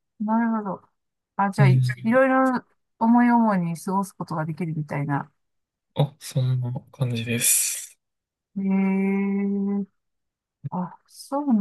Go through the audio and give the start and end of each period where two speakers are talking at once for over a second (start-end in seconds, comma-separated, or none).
none